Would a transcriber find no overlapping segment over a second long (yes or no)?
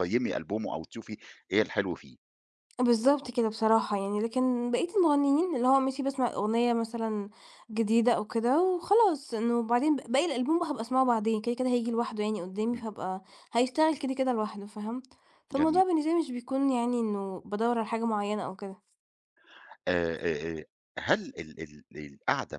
yes